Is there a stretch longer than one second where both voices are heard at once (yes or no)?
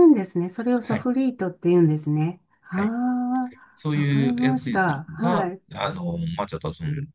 yes